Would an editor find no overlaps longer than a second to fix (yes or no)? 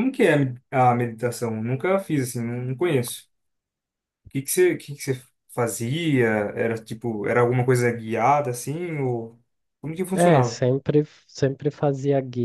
yes